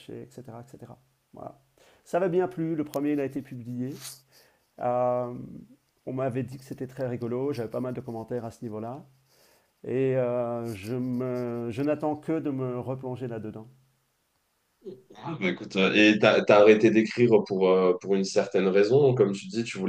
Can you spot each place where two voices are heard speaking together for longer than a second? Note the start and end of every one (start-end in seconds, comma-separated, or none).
none